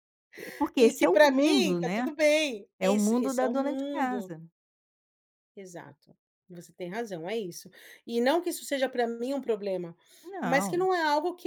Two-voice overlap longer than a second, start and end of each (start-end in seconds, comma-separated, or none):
0.8-2.1, 2.8-4.3